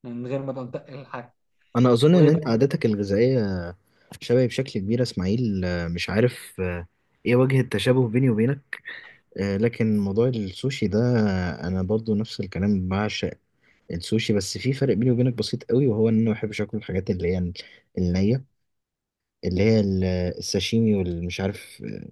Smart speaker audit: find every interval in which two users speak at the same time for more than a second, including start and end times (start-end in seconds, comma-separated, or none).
none